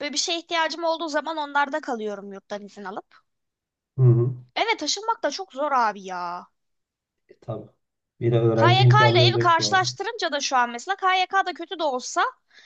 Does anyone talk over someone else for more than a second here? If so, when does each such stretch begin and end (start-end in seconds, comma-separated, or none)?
8.6-9.9